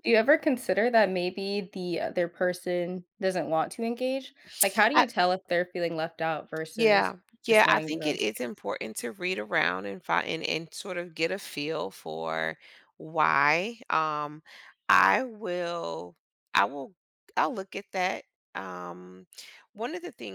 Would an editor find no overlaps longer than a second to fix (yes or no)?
no